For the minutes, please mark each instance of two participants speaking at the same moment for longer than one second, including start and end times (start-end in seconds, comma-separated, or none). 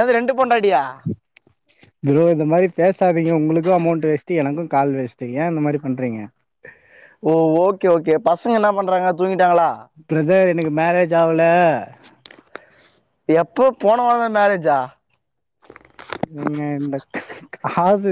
none